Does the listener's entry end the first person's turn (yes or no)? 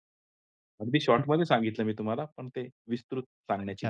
yes